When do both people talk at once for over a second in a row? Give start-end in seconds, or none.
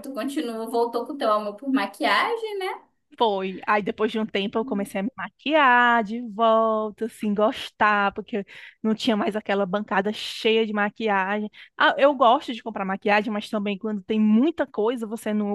none